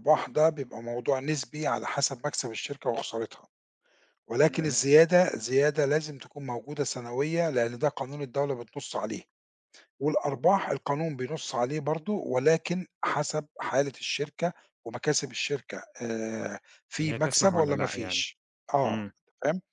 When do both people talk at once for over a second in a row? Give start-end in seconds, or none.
17.0-18.2